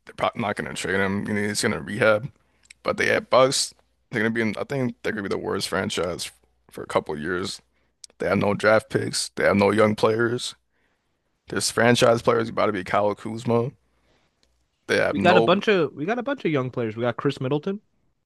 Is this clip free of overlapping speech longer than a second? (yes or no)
yes